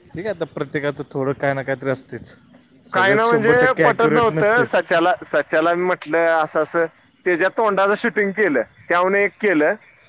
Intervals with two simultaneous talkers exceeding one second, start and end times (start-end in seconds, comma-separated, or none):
2.9-4.8